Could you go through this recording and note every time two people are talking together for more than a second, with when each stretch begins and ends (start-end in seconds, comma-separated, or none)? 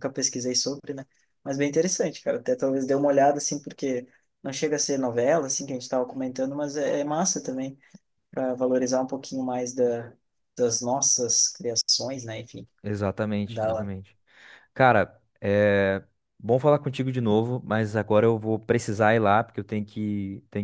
none